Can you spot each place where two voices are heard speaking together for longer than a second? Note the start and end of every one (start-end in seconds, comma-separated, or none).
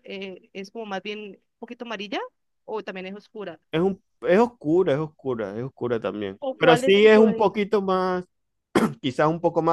6.4-7.6